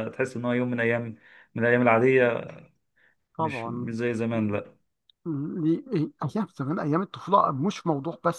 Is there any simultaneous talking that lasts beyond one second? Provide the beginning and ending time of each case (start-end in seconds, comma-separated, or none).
none